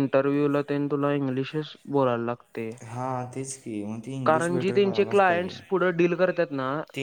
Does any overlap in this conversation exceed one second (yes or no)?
yes